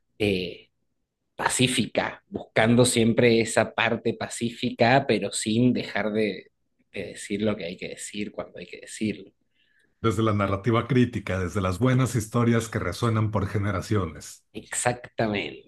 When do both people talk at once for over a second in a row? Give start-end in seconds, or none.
none